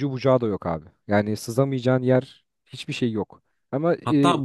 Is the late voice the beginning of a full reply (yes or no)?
yes